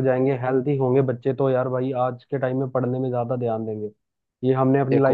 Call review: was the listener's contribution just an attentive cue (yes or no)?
yes